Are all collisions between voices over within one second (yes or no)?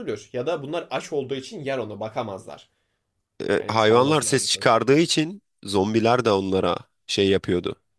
no